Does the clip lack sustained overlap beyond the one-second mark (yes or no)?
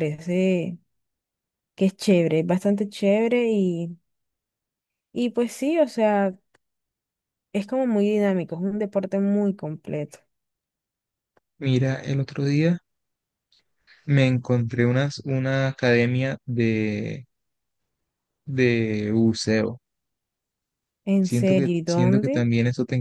no